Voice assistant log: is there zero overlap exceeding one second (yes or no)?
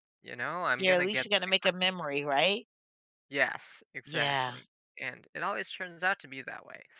no